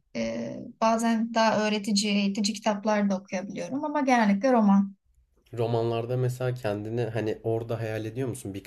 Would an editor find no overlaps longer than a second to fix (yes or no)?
yes